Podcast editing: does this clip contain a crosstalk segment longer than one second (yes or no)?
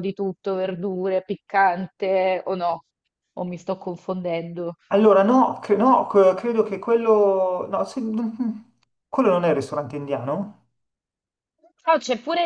no